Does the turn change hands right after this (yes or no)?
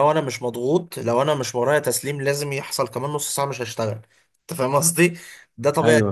no